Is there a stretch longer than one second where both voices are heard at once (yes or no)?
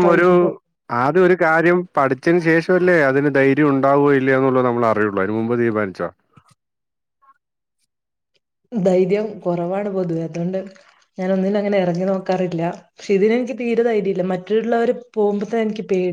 no